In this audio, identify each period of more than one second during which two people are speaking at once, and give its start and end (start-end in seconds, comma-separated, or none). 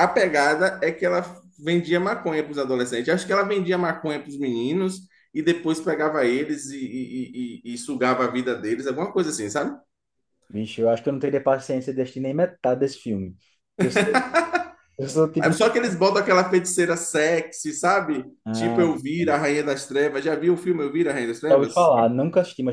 none